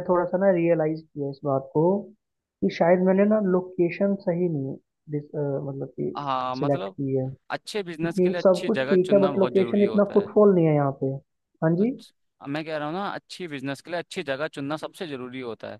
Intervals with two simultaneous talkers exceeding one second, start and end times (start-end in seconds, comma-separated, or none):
7.8-10.3